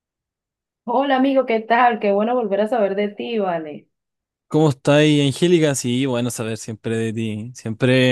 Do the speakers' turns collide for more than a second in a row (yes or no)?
no